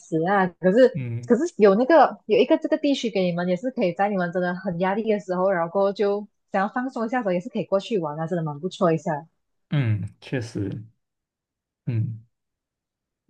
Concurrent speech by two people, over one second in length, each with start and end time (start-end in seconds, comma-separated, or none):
none